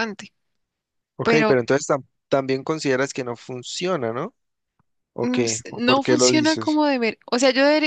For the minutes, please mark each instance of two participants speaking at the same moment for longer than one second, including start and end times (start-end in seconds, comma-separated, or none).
5.2-6.8